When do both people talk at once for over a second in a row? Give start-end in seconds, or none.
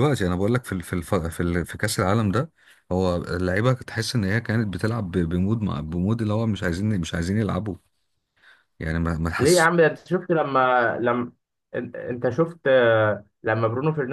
none